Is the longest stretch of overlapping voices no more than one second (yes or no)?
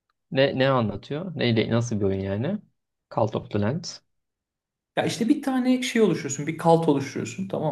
yes